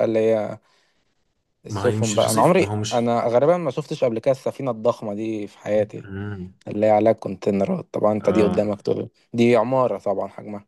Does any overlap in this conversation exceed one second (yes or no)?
yes